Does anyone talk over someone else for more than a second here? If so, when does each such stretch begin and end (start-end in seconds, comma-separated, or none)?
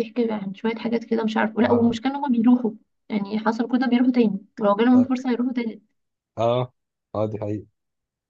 none